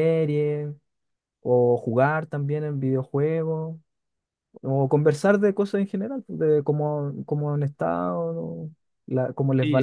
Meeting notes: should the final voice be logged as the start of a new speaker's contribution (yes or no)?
yes